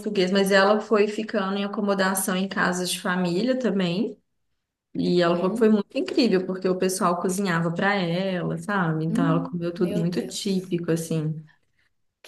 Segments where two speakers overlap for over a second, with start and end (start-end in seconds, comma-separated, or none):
9.1-10.7